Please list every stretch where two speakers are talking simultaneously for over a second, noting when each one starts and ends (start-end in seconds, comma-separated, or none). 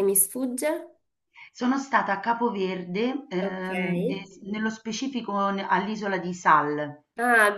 none